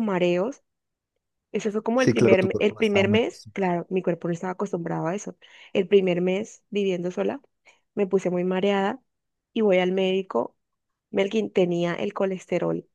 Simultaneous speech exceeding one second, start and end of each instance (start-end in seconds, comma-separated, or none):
1.9-3.7